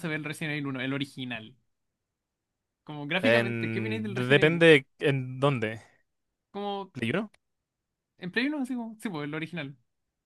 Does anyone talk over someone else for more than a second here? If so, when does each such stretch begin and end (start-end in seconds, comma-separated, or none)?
3.2-4.7